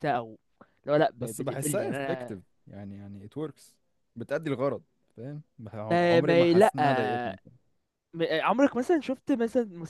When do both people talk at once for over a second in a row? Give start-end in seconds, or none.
1.2-2.4, 5.9-7.4